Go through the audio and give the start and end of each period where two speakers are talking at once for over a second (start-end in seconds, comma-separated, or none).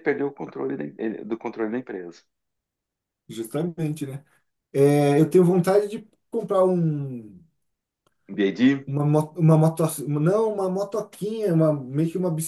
none